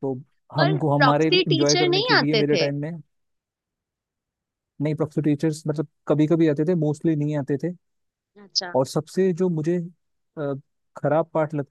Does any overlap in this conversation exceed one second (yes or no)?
yes